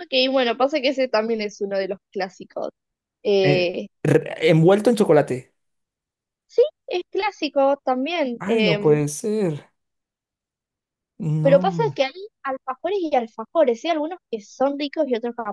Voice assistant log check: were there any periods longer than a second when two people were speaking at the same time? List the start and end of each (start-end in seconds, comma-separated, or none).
none